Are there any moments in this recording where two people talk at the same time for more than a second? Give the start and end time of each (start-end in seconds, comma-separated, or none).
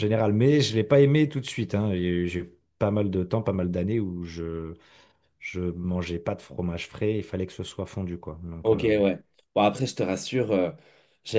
none